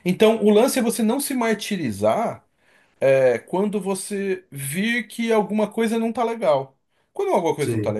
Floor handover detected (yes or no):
no